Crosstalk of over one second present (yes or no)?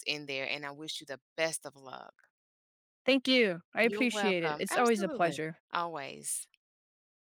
yes